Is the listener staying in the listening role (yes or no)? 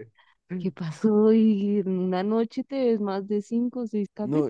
no